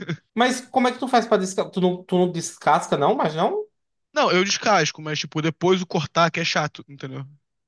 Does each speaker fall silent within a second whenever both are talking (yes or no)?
yes